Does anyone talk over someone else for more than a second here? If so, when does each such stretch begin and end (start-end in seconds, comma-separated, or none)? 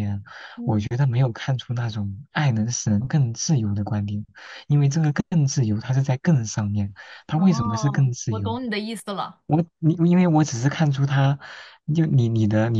7.3-8.6